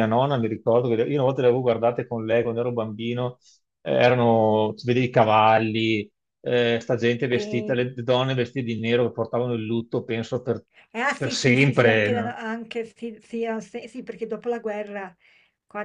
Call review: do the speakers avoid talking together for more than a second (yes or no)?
no